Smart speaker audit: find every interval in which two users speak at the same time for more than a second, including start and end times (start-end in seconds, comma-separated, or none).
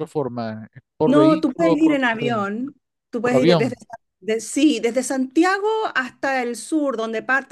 1.1-2.5